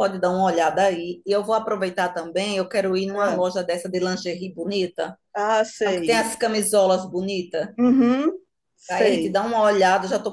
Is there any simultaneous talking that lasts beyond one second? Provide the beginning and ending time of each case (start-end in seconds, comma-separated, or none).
none